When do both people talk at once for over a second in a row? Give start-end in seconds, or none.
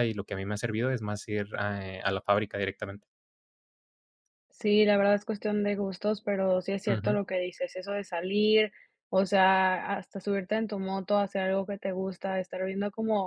none